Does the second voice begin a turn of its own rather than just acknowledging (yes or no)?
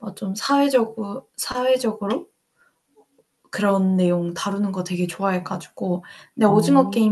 no